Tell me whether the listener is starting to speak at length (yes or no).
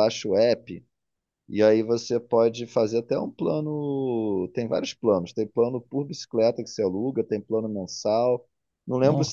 no